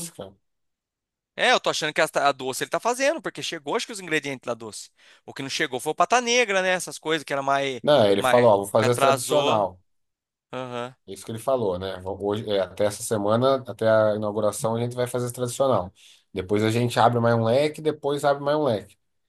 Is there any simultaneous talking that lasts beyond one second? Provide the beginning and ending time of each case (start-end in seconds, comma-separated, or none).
7.8-9.7